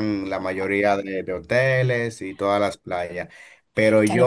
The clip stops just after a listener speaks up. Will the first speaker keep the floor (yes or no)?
no